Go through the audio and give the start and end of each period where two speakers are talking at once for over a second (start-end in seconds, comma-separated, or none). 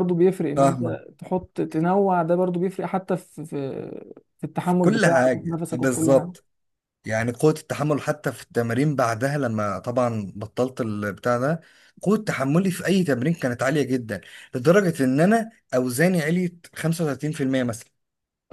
4.6-6.3